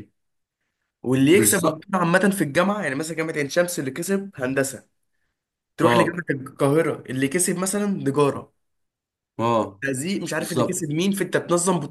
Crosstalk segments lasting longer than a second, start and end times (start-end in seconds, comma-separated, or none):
none